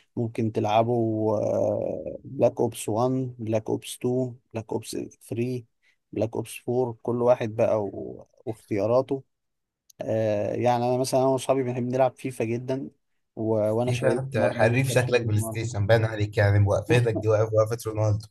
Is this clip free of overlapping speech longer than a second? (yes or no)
no